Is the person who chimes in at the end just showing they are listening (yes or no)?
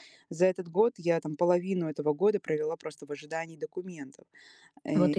yes